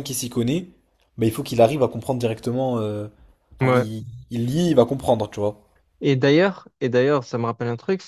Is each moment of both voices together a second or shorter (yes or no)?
yes